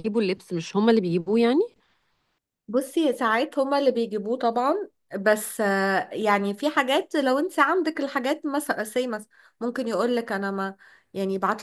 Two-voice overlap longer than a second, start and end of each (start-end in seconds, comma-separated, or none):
none